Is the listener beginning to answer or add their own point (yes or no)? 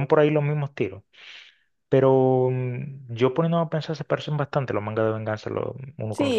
yes